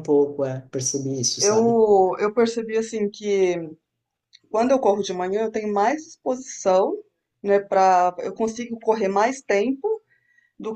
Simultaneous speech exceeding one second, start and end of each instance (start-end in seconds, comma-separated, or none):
none